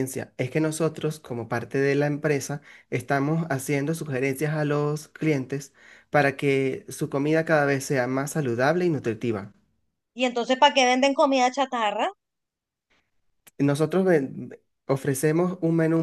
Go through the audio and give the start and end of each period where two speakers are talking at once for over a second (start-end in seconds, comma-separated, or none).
none